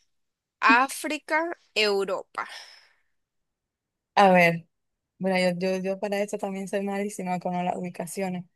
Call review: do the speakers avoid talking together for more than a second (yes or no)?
yes